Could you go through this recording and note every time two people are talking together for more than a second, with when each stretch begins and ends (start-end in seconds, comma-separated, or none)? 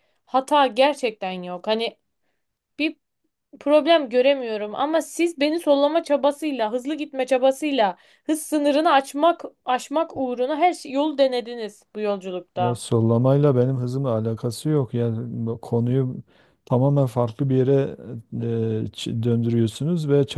none